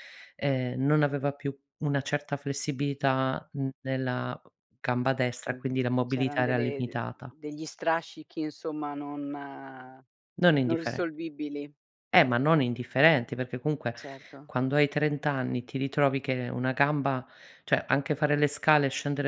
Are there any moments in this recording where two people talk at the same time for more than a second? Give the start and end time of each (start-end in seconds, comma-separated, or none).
5.5-7.0